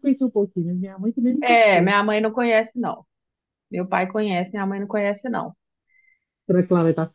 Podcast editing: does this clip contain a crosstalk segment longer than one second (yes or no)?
no